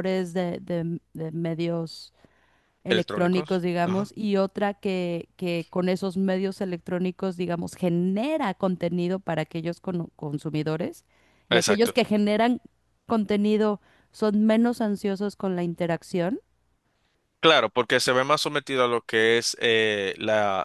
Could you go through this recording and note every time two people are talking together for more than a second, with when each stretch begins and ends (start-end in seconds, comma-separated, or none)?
2.9-4.1